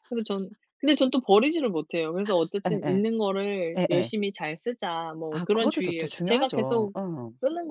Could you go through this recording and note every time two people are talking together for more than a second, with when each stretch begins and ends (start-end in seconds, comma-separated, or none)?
5.3-6.9